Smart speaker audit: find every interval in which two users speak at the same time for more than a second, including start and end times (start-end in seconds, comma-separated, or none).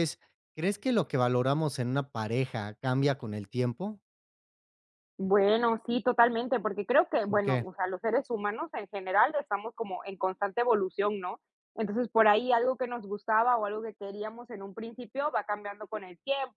none